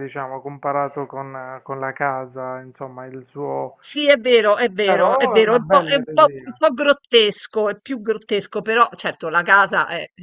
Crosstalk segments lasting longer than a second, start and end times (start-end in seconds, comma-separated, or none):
4.8-6.6